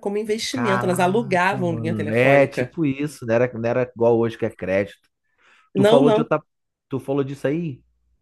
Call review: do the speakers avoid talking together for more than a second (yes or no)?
no